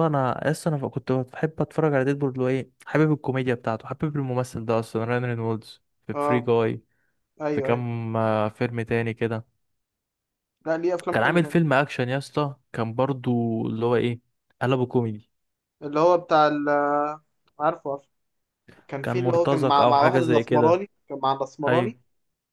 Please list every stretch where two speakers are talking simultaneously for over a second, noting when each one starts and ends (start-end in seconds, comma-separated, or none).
19.0-20.8